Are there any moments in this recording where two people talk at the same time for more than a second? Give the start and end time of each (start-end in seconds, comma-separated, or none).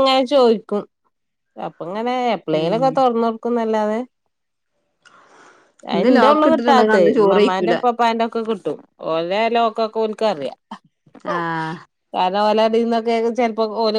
6.0-7.8